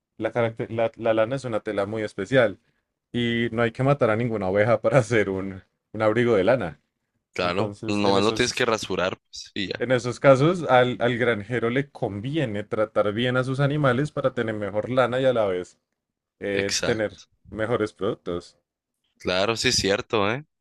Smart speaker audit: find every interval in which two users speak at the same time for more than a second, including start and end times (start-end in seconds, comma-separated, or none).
7.4-8.7